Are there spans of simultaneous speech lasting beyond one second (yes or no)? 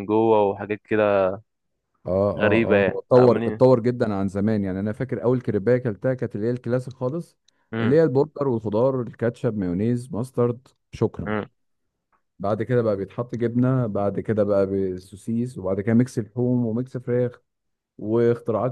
yes